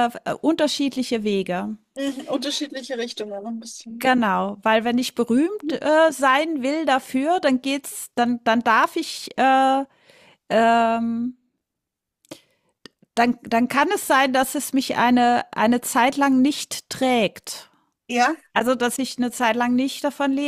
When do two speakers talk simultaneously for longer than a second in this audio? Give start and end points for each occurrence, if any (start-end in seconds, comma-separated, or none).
none